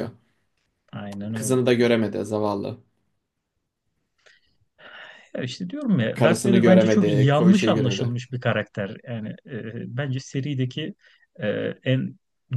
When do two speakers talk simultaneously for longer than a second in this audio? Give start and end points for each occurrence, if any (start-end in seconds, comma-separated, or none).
6.1-8.1